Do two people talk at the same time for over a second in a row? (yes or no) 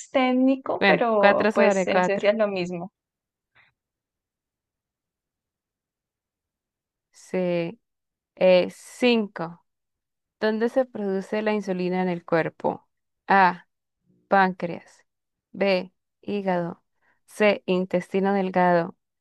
yes